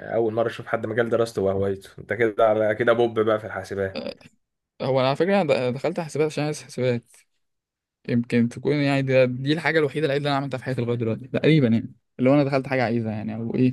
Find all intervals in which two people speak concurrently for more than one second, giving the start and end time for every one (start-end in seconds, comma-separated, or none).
none